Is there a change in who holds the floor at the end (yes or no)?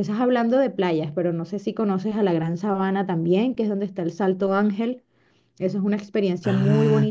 yes